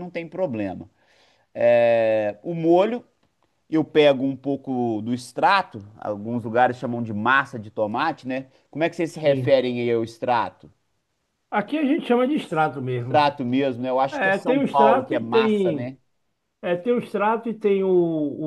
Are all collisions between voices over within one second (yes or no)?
no